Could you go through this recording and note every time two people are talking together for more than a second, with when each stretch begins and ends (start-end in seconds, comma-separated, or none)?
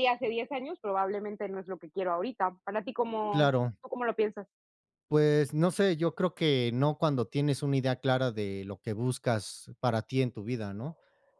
none